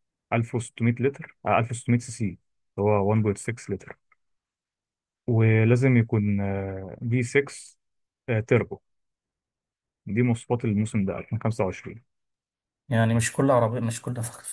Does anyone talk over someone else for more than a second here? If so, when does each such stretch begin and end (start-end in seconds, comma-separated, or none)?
none